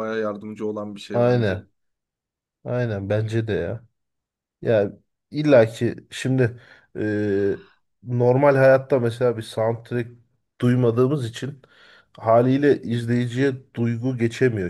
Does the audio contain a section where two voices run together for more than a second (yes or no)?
no